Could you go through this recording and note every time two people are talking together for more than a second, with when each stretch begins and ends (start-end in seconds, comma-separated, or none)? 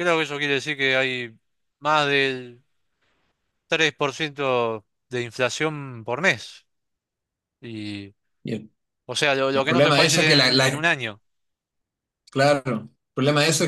9.5-10.8